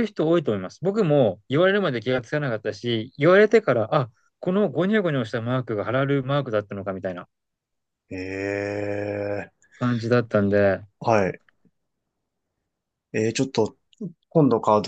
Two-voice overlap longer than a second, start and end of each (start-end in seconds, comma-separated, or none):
none